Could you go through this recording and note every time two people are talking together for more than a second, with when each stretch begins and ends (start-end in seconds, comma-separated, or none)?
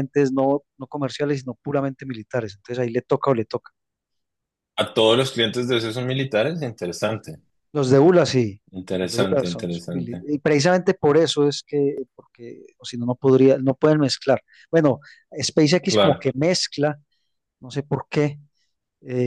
9.0-10.2